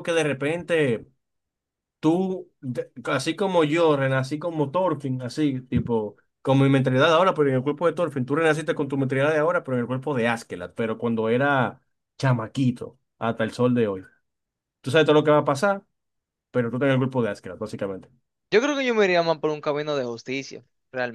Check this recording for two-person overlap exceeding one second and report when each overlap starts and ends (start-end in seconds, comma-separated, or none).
none